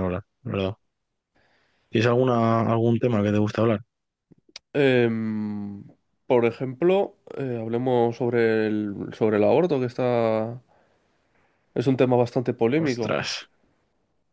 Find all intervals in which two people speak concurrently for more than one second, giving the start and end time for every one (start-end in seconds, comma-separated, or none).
none